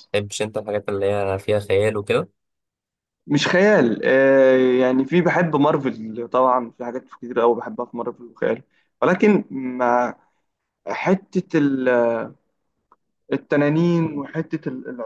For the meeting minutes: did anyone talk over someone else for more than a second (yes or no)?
no